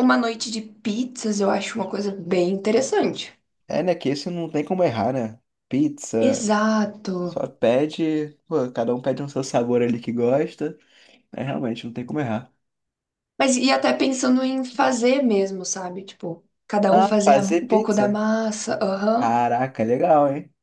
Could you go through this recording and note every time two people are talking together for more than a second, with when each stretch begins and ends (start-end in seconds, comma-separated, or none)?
16.9-18.2